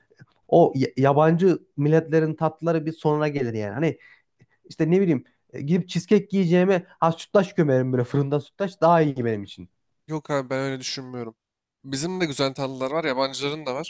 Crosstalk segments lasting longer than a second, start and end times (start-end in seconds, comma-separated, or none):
none